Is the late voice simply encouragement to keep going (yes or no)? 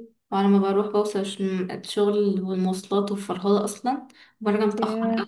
yes